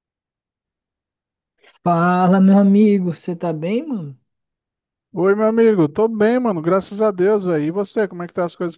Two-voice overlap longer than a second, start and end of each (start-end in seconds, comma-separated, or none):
none